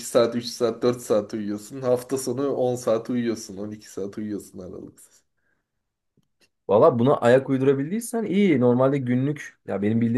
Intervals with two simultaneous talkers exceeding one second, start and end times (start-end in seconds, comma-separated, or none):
none